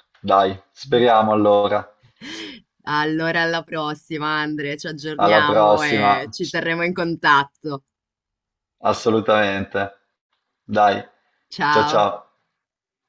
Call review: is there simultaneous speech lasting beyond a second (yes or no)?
yes